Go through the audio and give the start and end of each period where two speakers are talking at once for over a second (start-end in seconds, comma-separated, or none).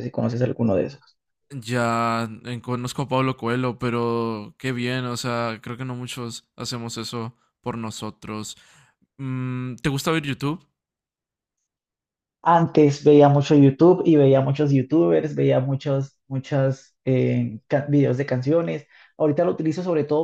none